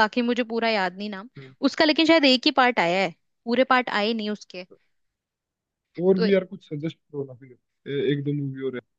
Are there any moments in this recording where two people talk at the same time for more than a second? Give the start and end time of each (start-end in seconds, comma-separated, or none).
none